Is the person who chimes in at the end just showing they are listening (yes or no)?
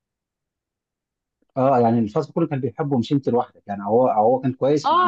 no